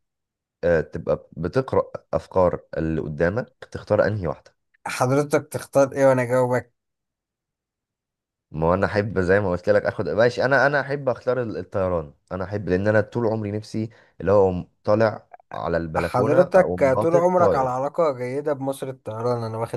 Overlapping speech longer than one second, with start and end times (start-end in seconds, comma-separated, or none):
16.0-17.7